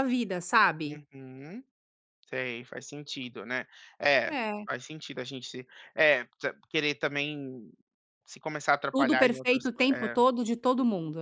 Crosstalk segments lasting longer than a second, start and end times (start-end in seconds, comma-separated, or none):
8.9-10.2